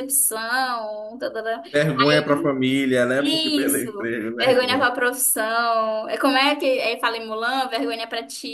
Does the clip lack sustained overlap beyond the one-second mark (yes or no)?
no